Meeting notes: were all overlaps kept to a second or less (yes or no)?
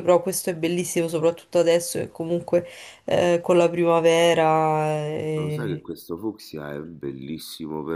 yes